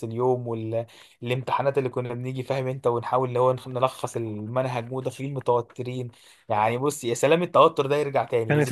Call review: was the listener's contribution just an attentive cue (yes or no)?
no